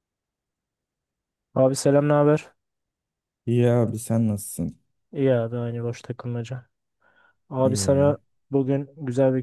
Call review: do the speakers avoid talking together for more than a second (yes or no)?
yes